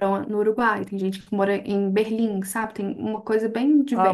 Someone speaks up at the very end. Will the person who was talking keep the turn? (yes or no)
no